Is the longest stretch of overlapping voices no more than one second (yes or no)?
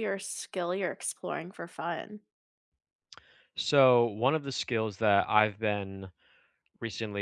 yes